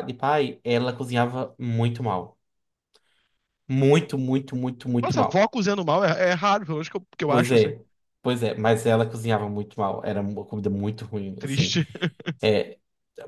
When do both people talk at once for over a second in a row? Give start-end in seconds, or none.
none